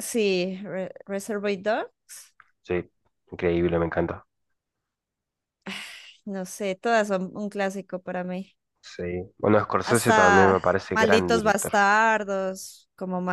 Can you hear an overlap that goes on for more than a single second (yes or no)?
yes